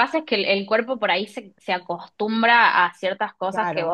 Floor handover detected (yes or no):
no